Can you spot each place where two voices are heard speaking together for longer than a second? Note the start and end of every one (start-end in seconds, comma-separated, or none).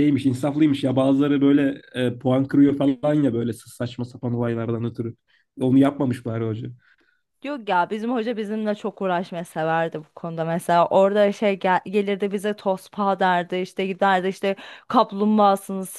none